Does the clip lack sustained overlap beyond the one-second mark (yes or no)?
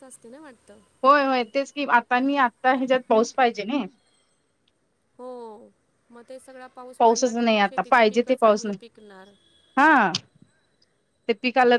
no